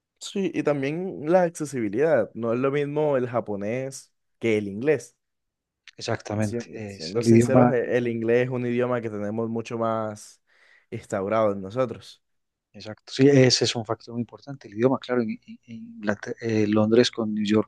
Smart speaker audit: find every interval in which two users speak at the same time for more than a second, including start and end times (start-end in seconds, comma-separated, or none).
6.4-7.7